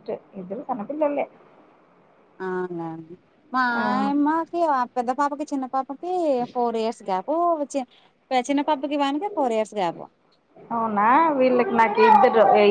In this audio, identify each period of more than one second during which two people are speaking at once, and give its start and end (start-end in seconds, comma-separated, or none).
none